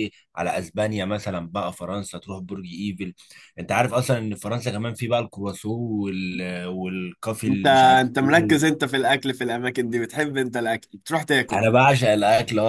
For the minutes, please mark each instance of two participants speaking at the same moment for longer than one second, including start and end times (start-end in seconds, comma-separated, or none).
7.5-8.7